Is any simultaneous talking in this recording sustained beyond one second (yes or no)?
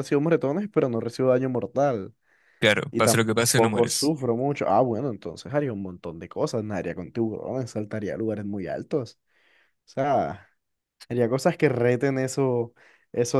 yes